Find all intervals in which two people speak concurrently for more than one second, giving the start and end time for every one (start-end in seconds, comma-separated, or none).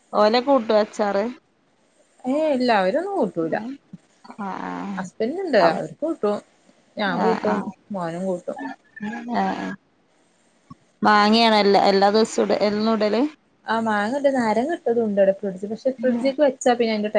none